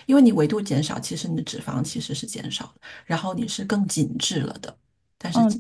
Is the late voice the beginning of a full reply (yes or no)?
yes